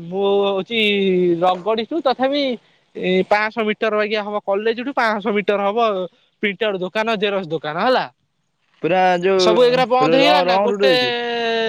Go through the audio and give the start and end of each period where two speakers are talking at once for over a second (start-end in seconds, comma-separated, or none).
9.4-10.9